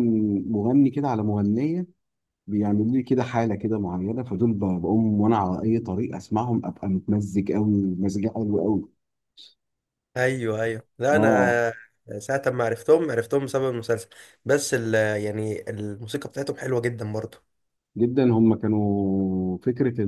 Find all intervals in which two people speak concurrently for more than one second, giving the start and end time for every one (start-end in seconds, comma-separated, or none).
none